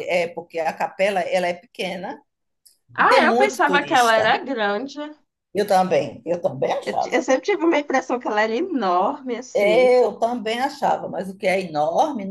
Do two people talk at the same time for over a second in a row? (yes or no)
yes